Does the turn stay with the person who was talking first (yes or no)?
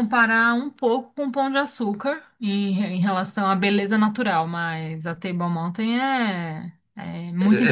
no